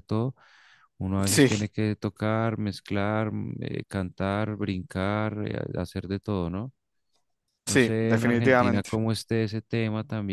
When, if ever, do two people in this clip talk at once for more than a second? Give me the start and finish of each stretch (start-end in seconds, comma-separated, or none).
7.7-8.9